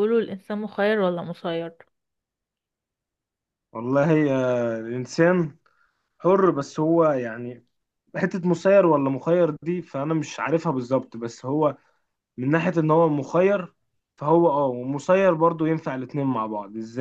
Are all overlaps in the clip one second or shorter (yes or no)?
yes